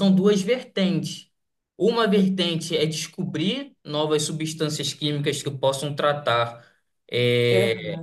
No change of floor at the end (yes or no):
yes